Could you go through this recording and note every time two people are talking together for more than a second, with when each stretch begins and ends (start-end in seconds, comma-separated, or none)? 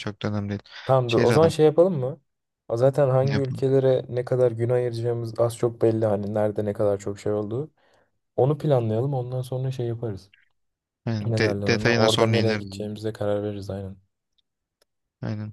11.2-12.8